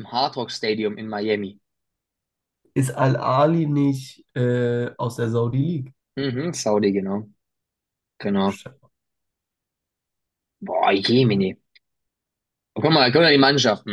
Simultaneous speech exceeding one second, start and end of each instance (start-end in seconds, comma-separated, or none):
none